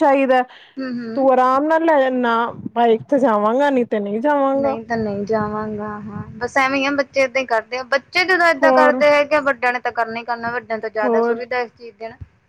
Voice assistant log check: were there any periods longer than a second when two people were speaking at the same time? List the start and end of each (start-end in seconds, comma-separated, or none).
none